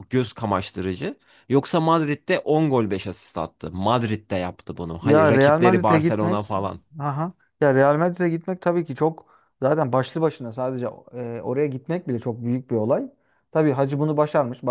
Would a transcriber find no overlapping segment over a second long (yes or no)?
no